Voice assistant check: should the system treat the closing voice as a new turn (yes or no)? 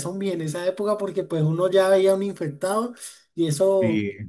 no